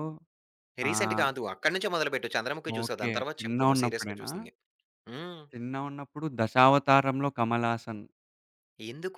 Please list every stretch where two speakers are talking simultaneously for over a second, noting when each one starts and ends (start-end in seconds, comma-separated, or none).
2.8-4.3